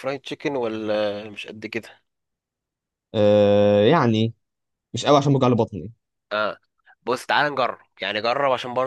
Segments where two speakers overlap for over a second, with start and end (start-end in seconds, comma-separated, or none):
none